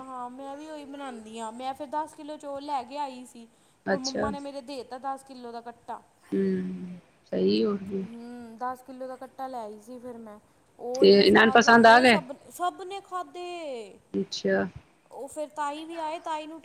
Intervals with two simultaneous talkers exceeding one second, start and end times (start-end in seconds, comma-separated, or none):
none